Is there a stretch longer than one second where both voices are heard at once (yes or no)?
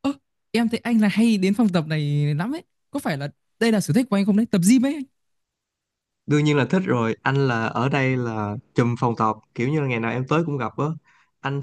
no